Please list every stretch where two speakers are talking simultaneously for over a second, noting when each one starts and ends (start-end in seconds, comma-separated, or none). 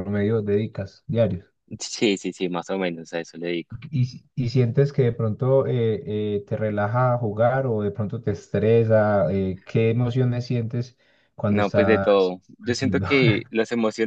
11.5-13.1